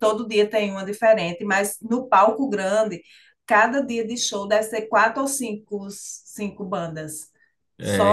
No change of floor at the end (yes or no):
no